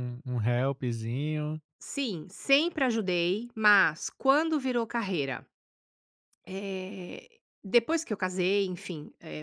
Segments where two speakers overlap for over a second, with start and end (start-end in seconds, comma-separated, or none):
none